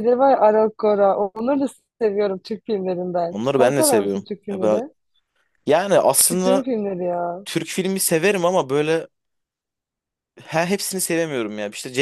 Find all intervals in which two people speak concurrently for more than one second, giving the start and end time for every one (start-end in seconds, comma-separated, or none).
3.3-4.8